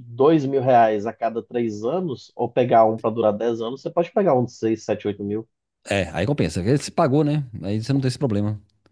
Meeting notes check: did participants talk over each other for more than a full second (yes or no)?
no